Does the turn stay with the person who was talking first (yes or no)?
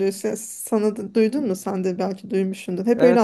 no